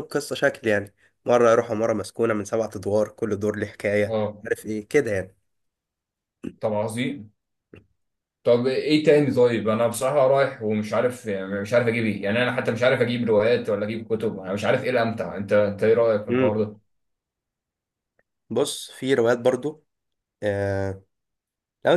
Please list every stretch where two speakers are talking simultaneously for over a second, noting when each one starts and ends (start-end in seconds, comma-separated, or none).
none